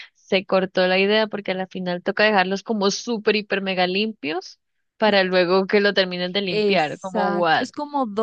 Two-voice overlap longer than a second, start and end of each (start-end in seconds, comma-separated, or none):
6.5-7.7